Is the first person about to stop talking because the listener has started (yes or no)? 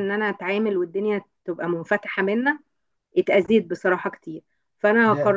yes